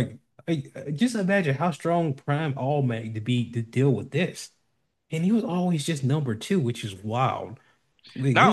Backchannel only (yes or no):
no